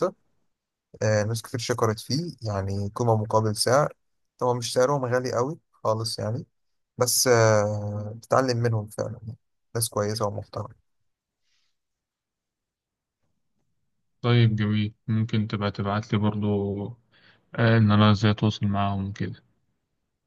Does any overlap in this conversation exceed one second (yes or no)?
no